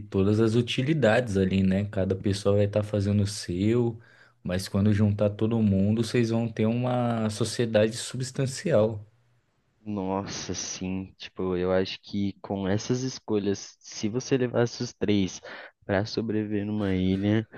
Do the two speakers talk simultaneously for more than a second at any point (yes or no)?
no